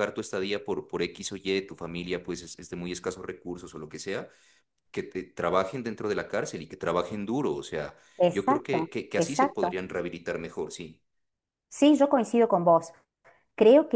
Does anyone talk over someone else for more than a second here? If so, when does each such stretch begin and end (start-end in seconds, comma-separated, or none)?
8.2-9.8